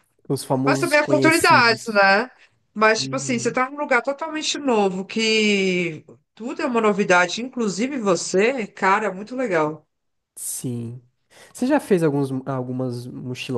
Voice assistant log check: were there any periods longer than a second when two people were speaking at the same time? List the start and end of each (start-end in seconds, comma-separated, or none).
0.6-2.1